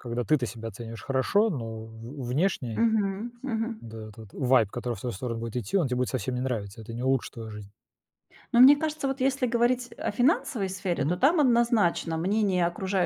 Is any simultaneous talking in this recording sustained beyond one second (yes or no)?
no